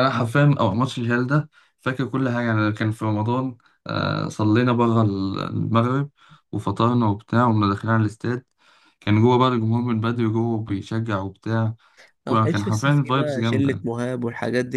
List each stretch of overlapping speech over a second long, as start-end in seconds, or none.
12.3-13.9